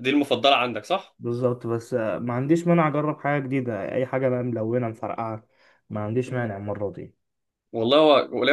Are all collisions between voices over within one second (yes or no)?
yes